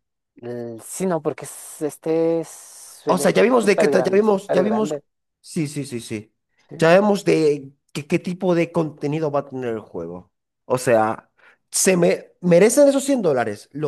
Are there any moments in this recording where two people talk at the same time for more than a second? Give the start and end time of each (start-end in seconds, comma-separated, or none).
3.0-5.0